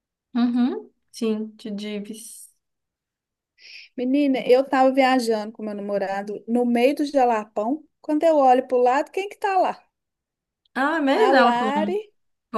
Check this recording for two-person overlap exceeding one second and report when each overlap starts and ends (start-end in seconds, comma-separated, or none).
none